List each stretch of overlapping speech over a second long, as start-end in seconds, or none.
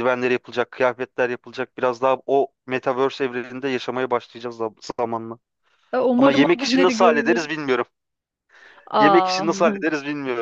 6.2-7.4